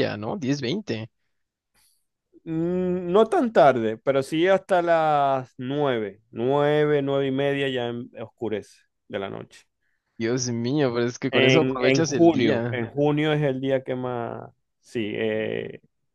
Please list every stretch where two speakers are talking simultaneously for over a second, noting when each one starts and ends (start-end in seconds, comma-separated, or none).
11.3-12.9